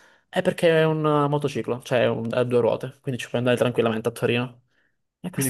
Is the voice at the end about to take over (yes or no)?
yes